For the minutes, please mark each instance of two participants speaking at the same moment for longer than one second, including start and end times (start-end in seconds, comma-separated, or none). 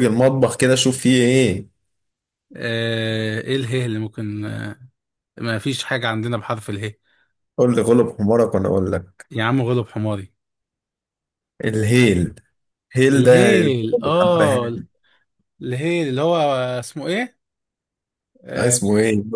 13.2-14.8